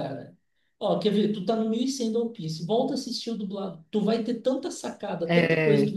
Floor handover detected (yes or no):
no